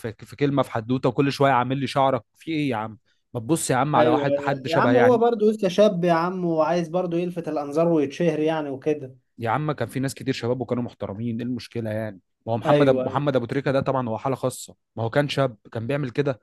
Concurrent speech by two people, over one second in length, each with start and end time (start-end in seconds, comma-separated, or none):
4.0-5.2